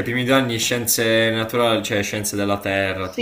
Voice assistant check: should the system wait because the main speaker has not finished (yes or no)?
no